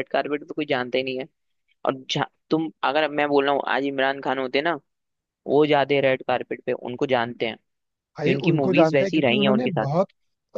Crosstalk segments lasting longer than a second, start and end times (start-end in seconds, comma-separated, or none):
8.2-9.9